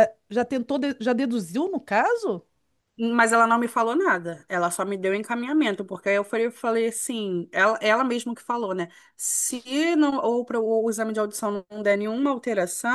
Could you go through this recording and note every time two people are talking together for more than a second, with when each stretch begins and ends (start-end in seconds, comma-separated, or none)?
none